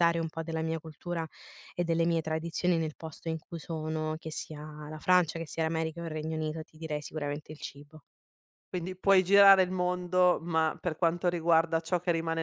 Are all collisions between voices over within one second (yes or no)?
yes